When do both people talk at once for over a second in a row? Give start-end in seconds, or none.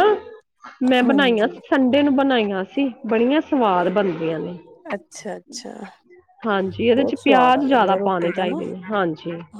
7.0-8.6